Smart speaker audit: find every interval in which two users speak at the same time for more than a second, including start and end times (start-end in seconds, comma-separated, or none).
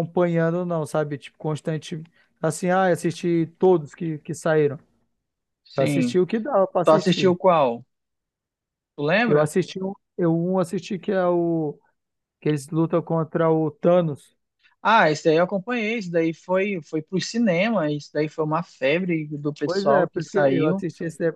19.6-20.8